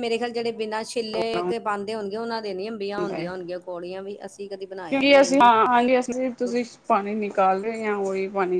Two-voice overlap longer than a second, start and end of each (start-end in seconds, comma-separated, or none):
none